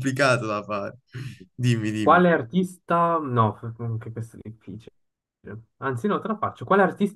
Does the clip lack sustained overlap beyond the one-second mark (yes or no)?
yes